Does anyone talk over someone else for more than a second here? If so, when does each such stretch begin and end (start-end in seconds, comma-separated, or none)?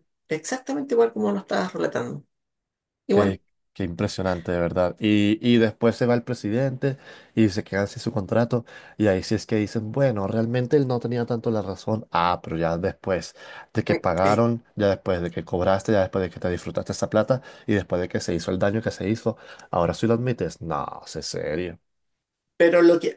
none